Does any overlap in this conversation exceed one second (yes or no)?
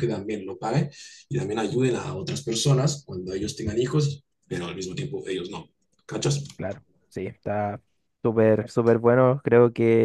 no